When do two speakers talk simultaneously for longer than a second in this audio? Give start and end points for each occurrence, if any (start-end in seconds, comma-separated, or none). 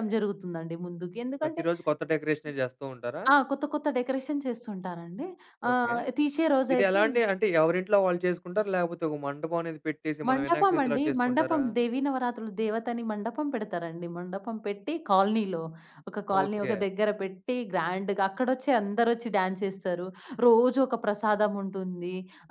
10.3-11.6